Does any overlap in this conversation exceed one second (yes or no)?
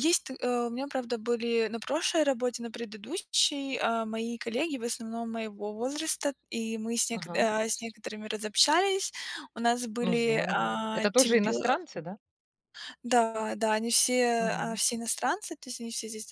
yes